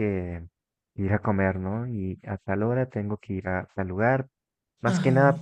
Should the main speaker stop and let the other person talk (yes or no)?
no